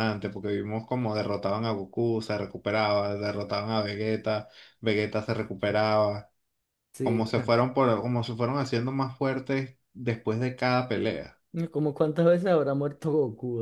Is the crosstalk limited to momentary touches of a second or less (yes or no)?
yes